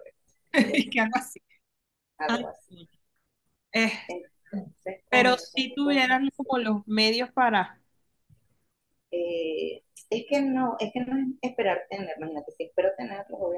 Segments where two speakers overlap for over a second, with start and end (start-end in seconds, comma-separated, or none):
5.1-6.5